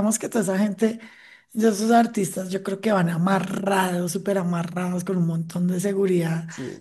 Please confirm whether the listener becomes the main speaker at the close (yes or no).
no